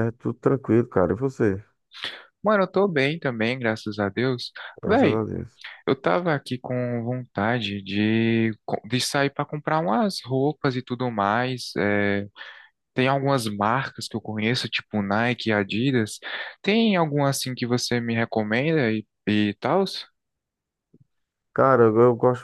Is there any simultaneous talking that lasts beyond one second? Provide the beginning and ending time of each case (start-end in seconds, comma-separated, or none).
none